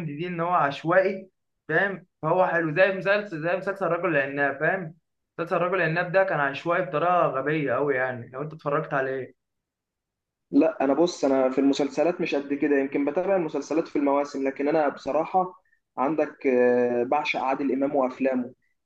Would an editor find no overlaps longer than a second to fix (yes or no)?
yes